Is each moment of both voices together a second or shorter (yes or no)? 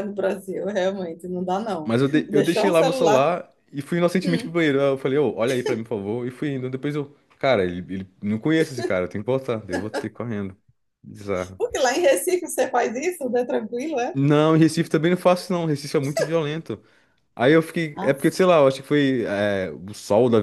no